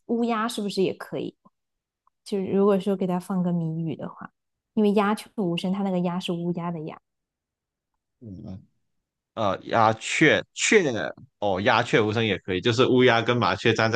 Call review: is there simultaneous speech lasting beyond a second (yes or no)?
no